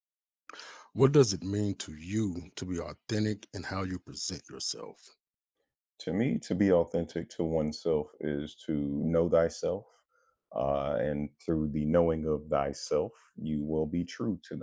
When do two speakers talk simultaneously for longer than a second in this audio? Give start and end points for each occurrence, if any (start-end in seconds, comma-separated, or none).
none